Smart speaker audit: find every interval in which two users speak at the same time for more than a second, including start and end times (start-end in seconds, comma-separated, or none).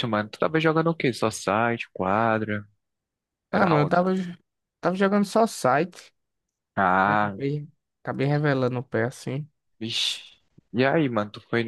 none